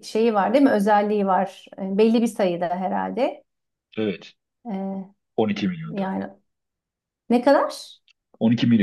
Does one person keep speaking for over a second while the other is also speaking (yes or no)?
no